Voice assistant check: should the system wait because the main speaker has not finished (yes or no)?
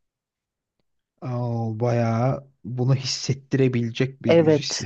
no